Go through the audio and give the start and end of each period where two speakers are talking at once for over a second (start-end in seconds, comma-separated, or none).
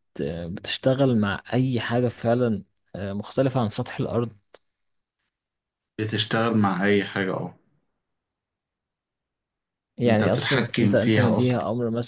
10.1-11.6